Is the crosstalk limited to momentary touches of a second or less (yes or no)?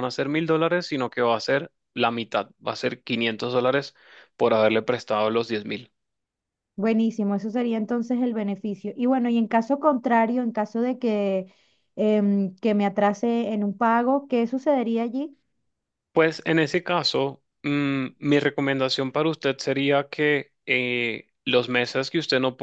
yes